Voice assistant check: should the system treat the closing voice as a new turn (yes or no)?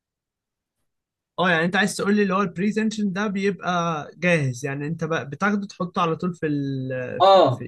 yes